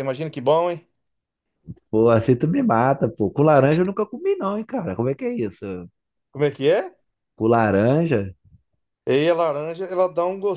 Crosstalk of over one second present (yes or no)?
no